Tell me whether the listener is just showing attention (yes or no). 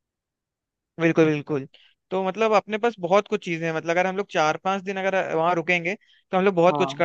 yes